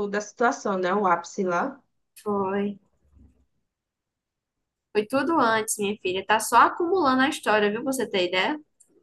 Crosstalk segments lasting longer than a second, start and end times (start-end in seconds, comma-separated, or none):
none